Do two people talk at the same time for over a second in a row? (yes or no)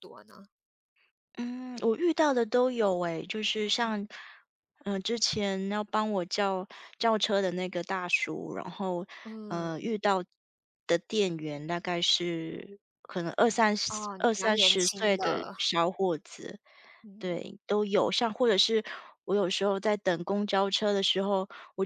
yes